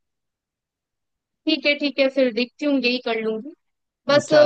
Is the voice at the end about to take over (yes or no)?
no